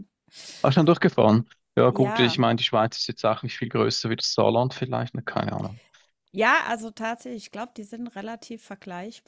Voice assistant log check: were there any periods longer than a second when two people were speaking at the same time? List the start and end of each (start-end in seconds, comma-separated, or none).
none